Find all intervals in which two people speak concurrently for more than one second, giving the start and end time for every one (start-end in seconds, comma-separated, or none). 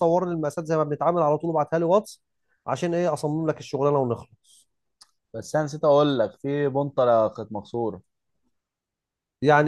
none